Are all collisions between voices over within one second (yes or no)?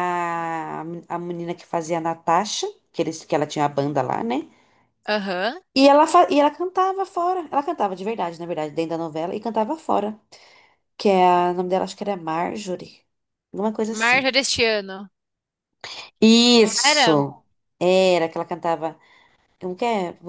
yes